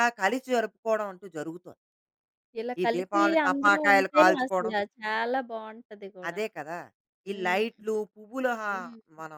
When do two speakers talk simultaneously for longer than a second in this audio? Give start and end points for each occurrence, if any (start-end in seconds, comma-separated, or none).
2.8-4.7